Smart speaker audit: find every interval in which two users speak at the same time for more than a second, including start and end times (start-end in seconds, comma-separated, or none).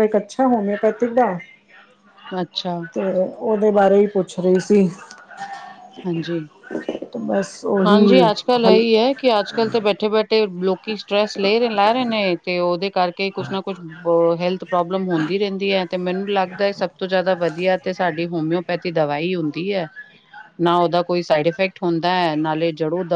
none